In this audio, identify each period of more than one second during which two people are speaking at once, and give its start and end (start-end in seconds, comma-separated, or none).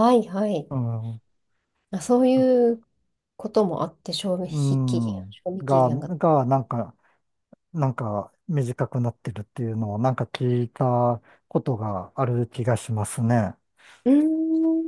4.5-6.1